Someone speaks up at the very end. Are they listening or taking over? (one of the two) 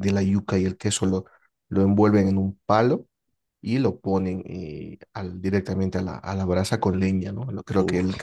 listening